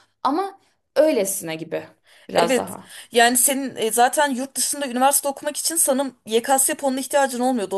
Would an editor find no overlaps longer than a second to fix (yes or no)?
yes